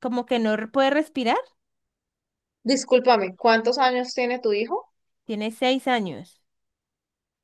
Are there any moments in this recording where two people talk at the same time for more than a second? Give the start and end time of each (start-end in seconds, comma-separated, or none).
none